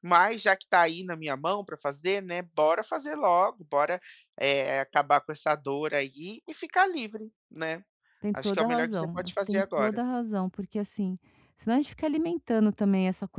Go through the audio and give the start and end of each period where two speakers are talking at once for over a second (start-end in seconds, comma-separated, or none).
8.3-10.0